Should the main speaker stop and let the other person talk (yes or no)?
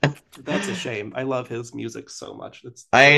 yes